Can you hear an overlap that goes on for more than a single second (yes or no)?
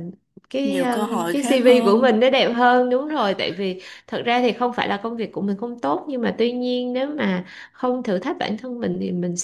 yes